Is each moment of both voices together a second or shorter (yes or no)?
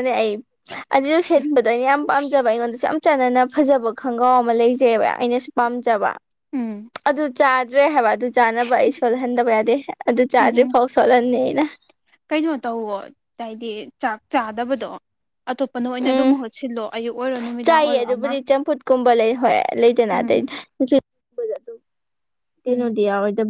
yes